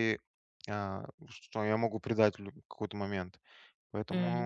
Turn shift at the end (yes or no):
no